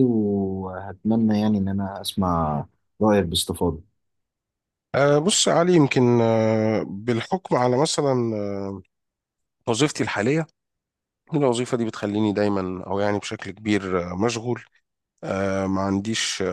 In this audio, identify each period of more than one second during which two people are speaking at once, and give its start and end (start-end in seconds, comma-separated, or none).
none